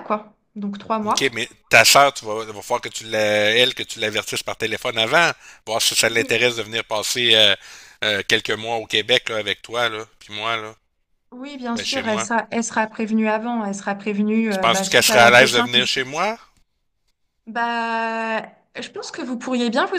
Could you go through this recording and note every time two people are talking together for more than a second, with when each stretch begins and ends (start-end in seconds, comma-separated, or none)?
14.5-15.9